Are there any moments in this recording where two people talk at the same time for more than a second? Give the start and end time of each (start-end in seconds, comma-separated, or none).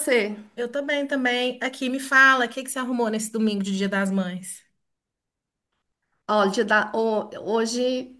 none